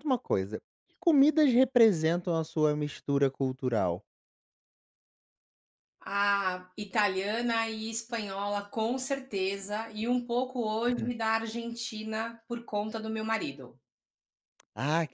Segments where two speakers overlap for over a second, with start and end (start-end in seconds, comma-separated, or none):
none